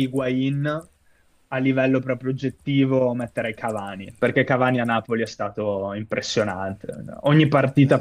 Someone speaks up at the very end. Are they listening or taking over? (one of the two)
listening